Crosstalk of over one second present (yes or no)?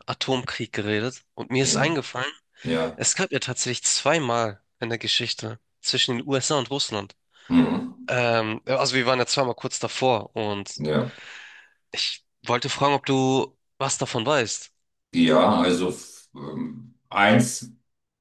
no